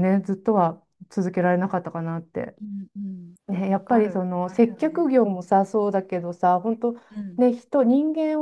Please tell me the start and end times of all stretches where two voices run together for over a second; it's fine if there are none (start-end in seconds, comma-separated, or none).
3.5-5.1